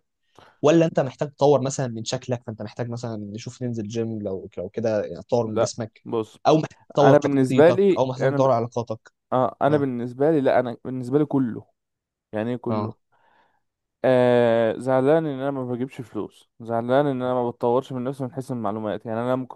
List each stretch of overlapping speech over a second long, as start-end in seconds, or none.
7.0-8.5